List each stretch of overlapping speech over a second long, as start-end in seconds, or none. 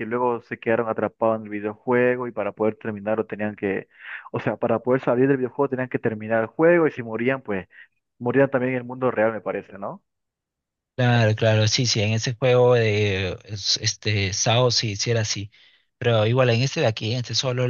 none